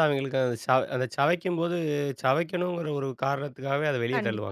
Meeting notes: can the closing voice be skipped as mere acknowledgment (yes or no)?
no